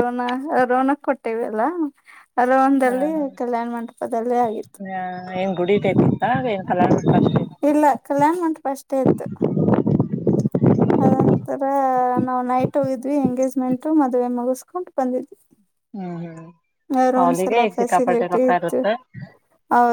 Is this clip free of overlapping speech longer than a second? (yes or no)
no